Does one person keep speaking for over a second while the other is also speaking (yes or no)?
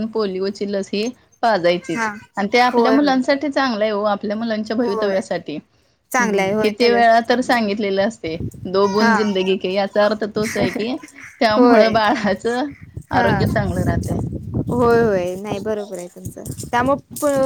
yes